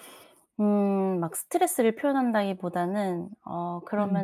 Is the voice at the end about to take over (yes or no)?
no